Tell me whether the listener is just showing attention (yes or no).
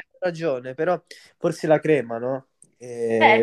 no